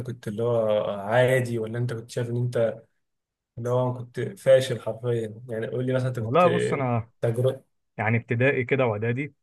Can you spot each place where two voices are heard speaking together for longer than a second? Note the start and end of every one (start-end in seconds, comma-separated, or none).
none